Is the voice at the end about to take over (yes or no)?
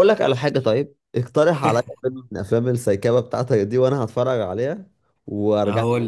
yes